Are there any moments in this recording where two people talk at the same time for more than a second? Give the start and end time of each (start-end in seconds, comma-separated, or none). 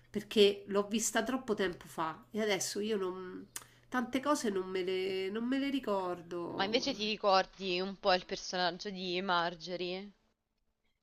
none